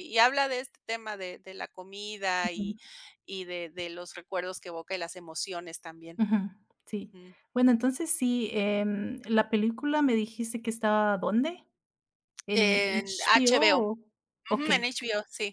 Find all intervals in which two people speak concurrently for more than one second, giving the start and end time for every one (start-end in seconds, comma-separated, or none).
12.5-13.8